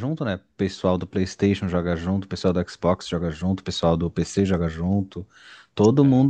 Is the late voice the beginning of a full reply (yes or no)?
no